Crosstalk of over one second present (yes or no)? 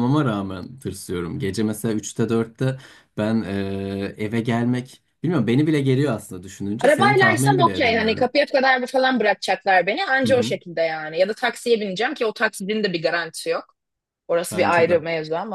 yes